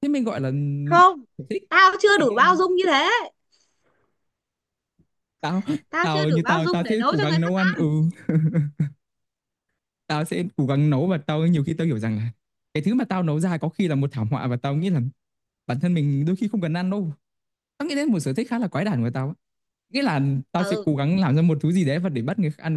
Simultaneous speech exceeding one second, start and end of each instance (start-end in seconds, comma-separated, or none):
6.0-7.8